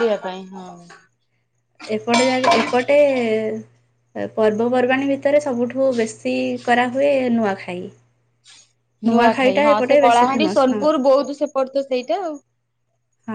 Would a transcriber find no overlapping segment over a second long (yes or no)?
no